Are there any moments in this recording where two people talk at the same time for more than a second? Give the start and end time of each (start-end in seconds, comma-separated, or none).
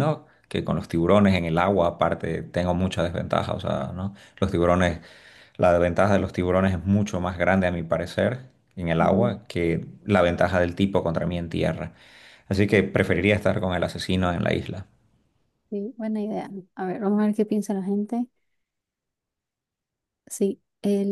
none